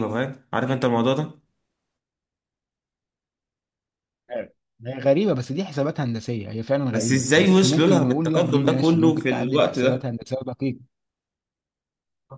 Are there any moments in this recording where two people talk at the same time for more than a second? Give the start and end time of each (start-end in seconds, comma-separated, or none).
6.9-10.1